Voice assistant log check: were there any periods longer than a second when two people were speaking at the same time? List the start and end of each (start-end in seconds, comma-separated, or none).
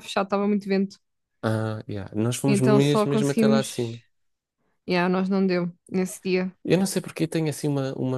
2.5-4.0